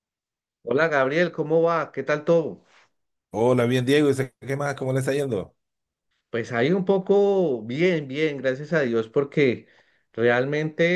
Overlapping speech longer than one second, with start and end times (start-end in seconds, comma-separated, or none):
none